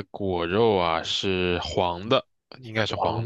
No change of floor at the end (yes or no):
no